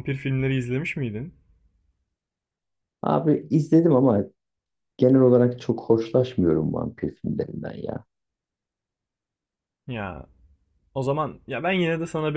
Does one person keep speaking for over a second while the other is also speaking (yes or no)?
no